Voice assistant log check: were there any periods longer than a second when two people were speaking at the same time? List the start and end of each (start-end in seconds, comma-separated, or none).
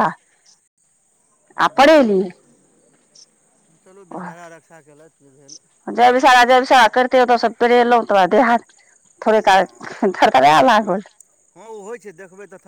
none